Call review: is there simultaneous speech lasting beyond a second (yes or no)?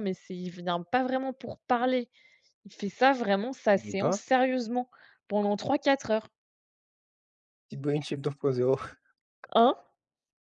no